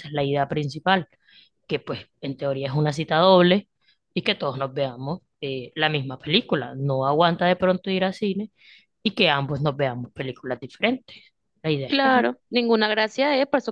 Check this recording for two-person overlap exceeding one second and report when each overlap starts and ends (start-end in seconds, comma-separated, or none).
none